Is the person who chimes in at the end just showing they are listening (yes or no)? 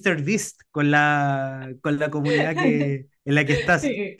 no